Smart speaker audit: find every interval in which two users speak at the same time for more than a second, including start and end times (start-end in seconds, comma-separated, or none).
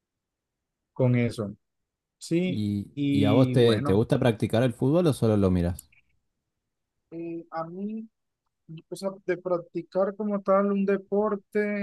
2.5-4.0